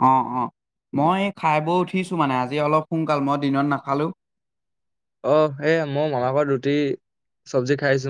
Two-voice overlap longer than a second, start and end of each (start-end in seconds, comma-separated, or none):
none